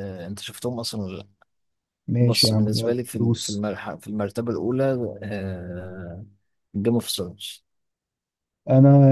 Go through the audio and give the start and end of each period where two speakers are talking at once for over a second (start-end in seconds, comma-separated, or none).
2.2-3.6